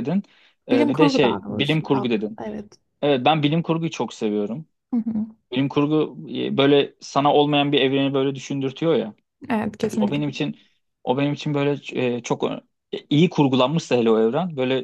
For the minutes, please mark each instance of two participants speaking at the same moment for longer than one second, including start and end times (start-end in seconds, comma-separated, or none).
0.7-2.4